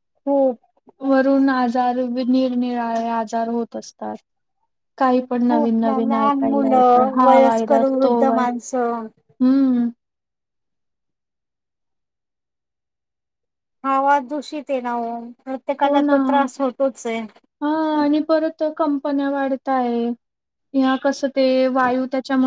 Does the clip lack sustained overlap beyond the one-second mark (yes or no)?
no